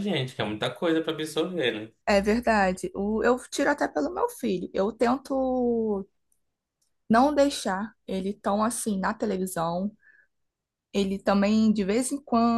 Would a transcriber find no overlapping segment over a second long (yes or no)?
yes